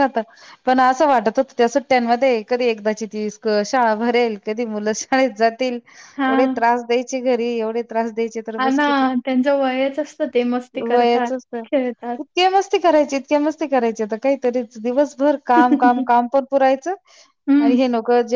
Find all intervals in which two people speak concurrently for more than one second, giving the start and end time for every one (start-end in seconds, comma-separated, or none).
none